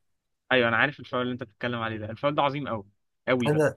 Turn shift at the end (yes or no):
no